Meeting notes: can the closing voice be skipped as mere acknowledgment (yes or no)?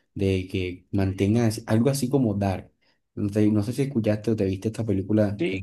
no